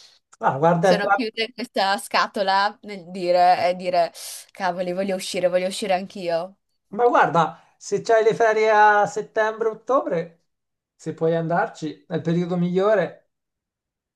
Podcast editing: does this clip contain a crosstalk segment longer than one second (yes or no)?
no